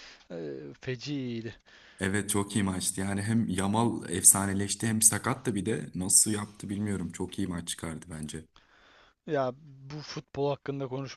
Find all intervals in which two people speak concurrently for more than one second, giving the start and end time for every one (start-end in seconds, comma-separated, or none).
none